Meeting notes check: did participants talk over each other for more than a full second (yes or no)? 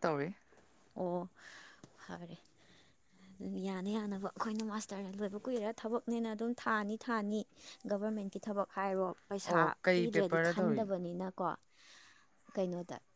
yes